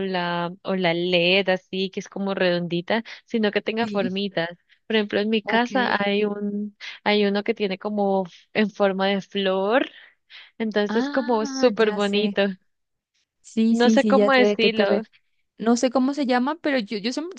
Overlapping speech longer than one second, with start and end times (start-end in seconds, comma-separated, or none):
10.9-12.4, 13.7-15.0